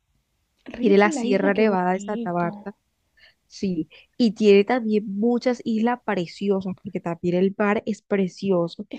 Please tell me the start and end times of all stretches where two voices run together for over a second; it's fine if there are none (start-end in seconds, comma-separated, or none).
0.8-2.7